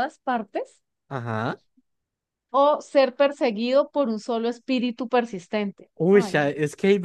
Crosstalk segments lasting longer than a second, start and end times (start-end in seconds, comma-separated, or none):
none